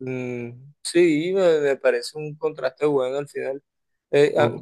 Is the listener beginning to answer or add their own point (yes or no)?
no